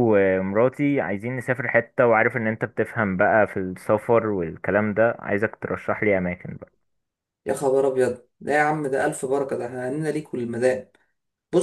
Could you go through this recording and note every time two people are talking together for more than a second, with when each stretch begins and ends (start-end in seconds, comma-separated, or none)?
none